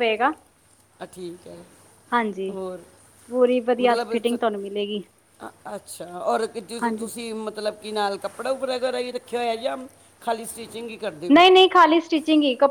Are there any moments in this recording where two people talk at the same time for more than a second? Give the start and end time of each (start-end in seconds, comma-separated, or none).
3.8-5.0